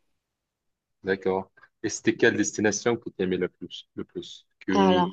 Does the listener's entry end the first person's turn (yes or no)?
no